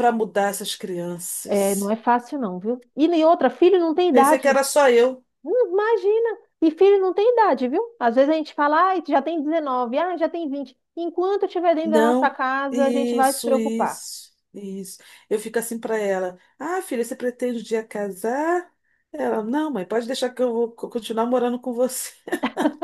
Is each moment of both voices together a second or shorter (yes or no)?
no